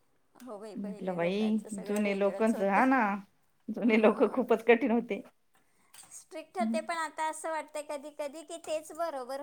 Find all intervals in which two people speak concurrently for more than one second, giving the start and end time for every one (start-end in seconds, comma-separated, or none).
0.8-2.8